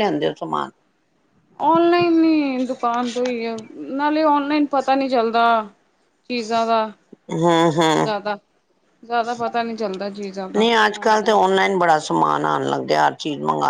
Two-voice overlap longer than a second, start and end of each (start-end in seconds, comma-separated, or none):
none